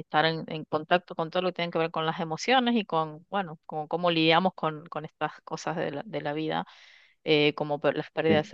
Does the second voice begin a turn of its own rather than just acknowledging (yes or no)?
no